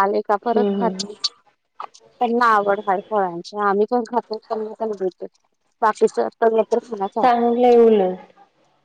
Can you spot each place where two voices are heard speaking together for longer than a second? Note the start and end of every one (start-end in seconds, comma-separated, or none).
none